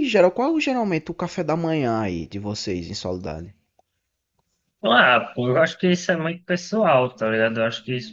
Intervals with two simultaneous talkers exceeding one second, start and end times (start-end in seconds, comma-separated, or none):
none